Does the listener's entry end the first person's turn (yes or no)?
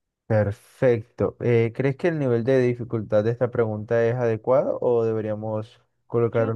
yes